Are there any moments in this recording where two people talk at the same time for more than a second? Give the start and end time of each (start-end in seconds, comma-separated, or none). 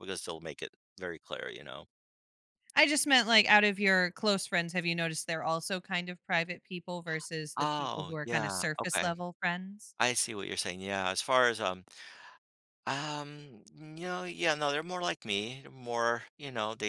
7.6-9.1